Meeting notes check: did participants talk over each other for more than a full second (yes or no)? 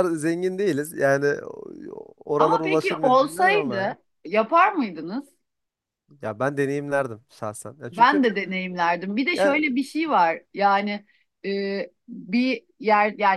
yes